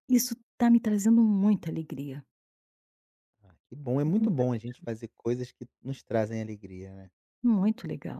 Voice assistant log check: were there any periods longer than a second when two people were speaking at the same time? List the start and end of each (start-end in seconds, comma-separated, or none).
none